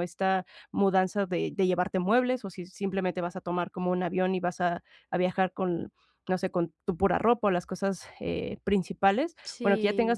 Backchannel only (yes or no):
yes